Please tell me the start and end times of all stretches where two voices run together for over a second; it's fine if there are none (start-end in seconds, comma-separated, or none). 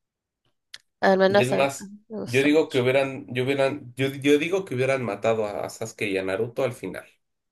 1.3-2.8